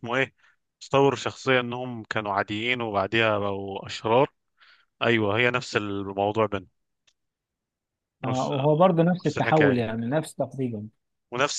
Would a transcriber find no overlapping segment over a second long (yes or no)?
no